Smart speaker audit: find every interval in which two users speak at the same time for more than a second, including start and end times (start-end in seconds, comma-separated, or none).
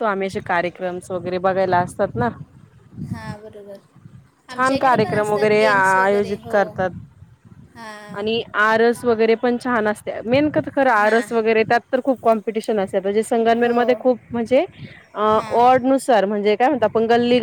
4.5-6.6